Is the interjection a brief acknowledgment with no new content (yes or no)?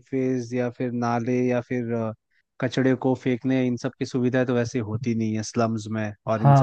yes